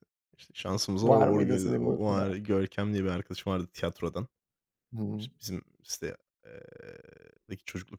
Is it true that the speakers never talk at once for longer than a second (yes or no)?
no